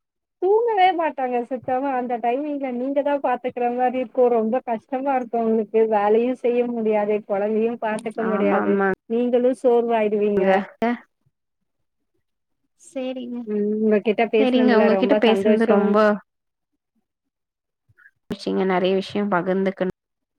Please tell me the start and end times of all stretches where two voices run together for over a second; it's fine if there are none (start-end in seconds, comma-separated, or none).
14.4-15.8